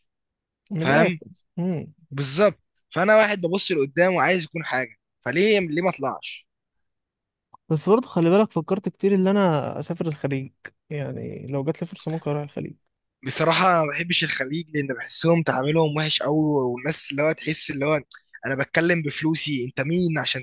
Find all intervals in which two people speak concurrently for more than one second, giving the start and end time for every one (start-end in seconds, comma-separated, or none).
none